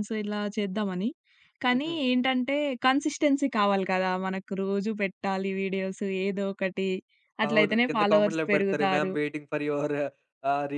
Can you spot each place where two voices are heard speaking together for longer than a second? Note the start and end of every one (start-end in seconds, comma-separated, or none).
7.5-9.1